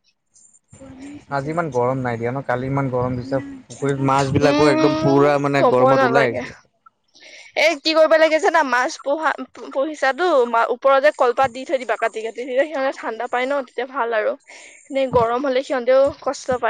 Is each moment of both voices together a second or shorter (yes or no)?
no